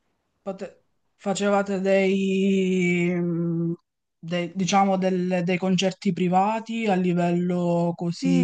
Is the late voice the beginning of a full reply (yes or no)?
yes